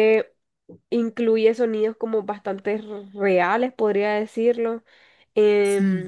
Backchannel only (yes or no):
yes